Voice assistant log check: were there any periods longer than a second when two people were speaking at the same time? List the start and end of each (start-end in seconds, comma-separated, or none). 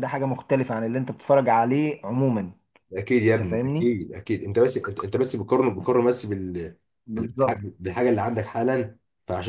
none